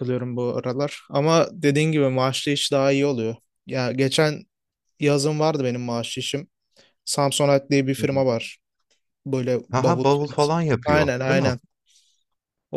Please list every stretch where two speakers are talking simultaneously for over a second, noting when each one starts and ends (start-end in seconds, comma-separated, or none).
9.7-11.5